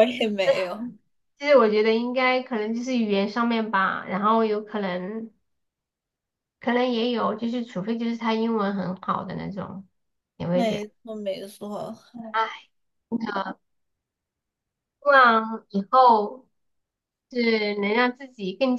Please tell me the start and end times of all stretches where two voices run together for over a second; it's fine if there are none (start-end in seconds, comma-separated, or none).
none